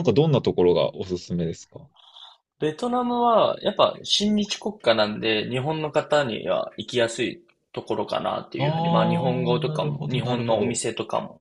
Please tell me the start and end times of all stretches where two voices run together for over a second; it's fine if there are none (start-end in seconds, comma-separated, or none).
8.6-10.8